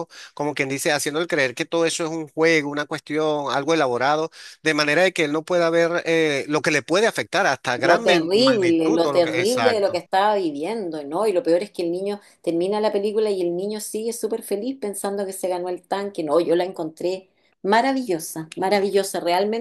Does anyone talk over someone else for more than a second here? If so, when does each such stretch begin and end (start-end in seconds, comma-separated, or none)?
7.8-10.0